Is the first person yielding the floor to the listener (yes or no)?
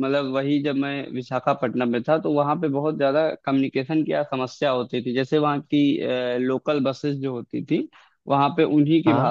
no